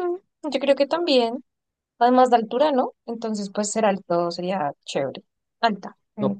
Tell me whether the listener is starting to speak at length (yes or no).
yes